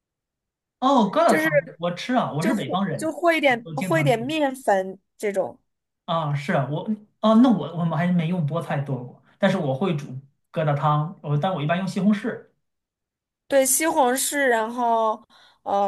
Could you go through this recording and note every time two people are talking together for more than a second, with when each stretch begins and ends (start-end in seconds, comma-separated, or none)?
2.4-4.3